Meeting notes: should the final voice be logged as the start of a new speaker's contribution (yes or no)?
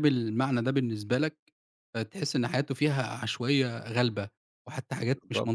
yes